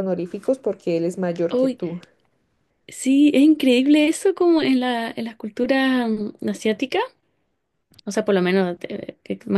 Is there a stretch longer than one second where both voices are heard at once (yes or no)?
no